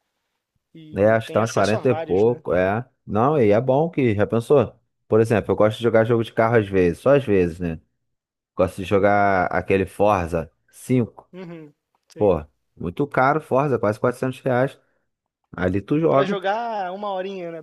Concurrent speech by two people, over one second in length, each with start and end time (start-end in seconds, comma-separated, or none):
1.0-2.4